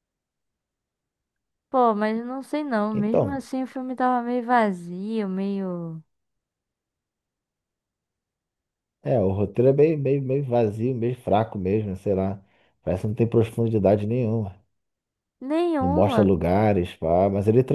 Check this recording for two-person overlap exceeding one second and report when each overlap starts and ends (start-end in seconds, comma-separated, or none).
none